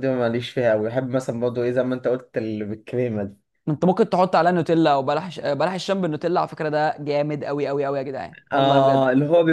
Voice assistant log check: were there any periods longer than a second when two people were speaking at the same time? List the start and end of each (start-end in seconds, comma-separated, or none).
none